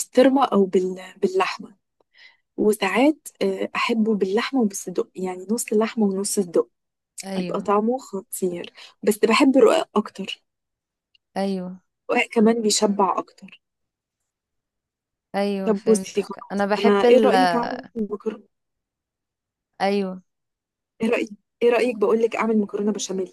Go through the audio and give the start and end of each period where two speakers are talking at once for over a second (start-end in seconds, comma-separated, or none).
15.6-17.3